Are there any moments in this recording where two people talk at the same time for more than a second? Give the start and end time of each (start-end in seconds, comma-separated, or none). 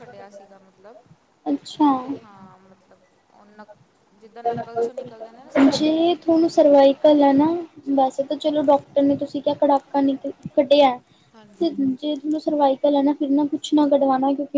none